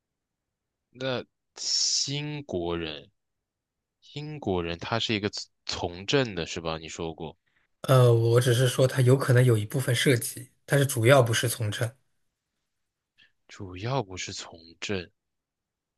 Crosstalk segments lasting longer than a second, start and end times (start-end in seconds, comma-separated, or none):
none